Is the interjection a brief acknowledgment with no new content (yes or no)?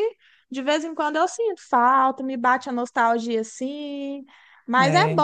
yes